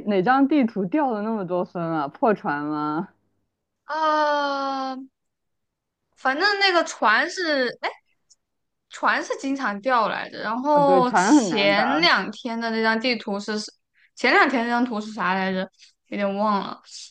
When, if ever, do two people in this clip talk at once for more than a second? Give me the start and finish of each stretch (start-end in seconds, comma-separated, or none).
10.7-12.1